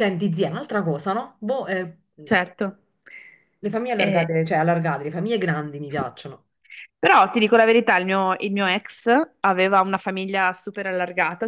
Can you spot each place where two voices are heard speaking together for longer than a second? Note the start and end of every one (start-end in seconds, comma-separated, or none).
none